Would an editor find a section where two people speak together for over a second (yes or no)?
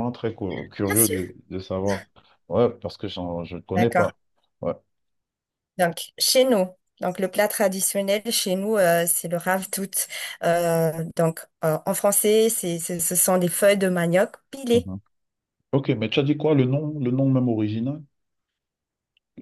no